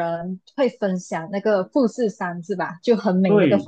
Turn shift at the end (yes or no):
yes